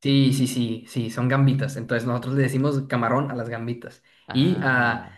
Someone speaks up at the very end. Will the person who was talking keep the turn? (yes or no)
yes